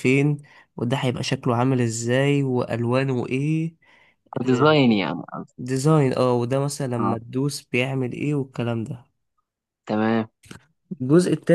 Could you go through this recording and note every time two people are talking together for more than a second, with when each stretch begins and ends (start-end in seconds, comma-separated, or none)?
none